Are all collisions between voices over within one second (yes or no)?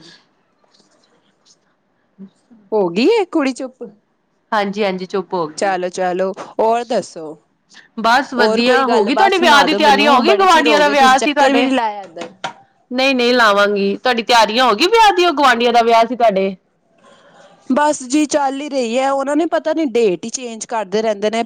no